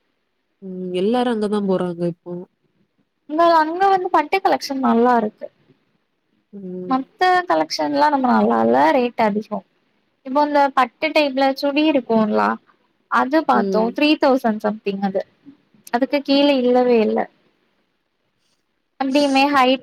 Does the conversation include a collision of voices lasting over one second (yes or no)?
no